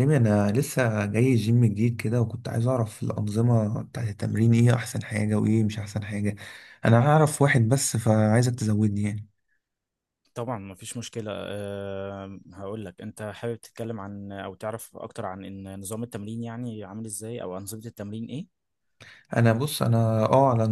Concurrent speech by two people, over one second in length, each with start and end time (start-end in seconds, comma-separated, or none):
none